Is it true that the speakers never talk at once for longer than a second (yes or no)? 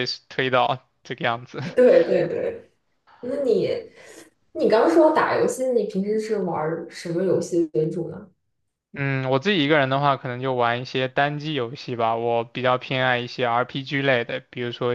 yes